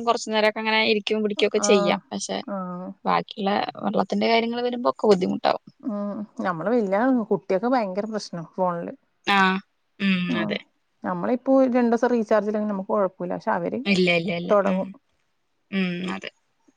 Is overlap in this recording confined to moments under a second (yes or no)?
yes